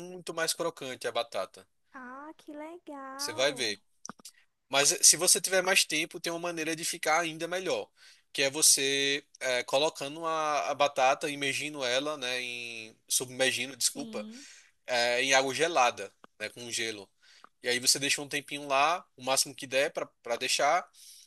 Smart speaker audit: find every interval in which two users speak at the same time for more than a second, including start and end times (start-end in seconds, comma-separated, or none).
none